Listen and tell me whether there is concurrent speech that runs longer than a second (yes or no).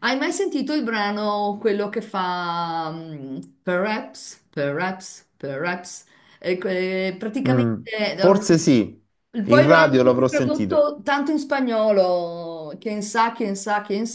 yes